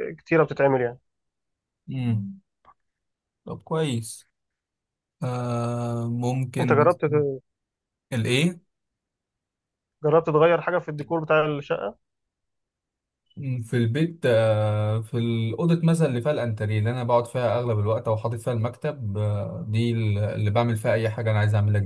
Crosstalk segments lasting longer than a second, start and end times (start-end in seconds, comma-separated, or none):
none